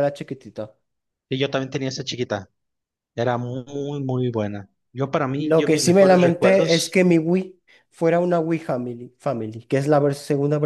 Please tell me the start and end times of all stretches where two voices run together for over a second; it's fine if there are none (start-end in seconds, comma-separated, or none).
5.3-7.0